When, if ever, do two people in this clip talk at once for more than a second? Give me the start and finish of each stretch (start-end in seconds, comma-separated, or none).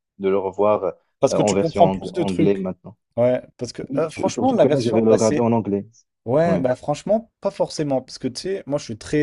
1.4-2.7, 3.9-5.4